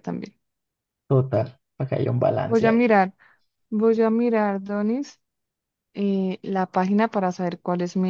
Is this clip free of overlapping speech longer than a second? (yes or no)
yes